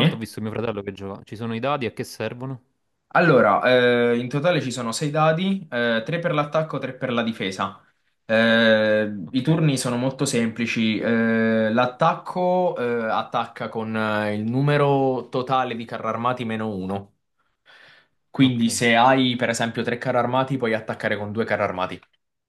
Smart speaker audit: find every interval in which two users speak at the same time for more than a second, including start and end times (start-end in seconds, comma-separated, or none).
none